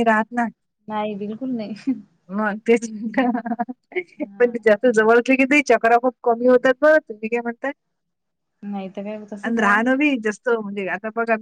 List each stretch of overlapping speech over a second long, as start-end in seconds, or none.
none